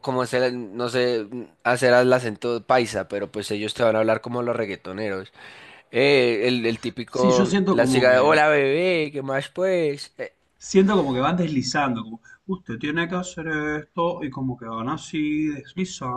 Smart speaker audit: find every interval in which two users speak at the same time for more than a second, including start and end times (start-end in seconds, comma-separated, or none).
7.1-8.4